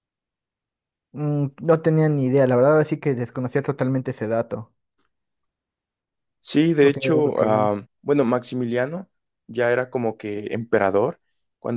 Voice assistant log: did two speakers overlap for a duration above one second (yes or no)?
no